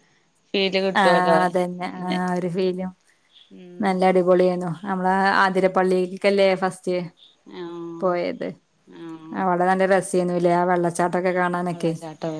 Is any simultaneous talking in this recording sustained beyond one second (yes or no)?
no